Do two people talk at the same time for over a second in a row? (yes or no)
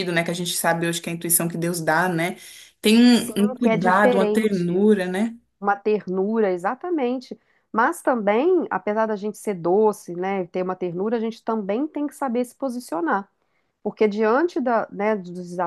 yes